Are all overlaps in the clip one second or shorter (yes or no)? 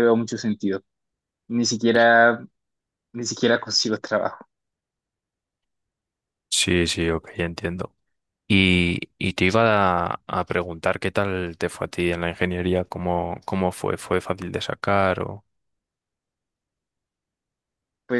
yes